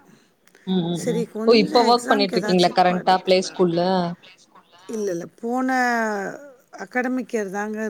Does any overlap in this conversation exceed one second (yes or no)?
yes